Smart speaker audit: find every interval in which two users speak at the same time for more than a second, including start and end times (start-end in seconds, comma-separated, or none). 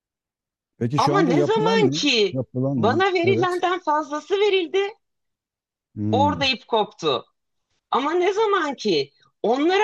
1.0-3.6